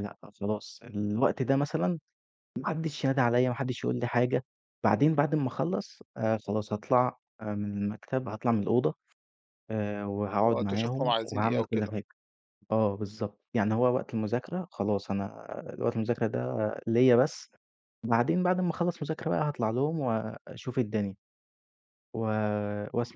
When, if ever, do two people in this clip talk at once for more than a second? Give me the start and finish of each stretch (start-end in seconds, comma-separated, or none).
10.4-11.9